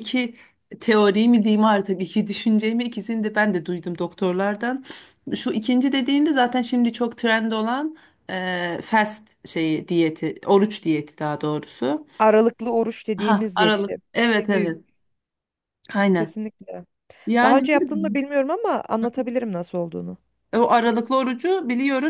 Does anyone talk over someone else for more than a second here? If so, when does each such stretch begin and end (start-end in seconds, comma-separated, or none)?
13.2-14.7